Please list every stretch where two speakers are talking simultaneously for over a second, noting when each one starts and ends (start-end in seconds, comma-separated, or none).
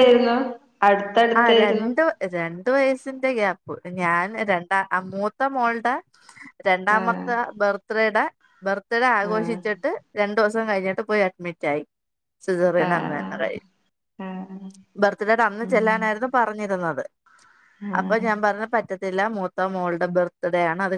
none